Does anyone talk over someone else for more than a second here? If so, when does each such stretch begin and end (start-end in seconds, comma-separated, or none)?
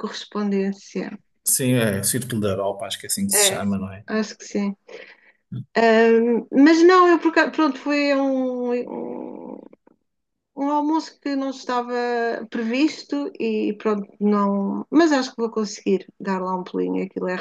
none